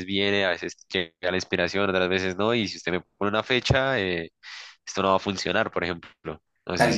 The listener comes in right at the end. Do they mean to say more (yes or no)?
yes